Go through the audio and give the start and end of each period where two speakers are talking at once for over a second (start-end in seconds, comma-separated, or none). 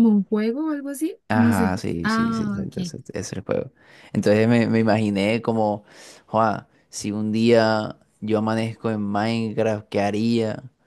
1.3-2.7